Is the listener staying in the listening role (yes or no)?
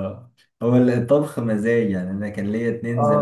yes